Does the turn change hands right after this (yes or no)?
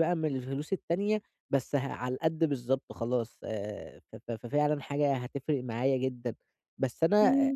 no